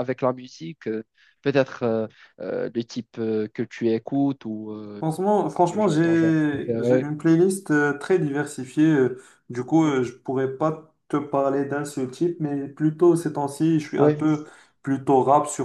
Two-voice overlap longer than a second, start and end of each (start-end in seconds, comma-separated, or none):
5.7-7.1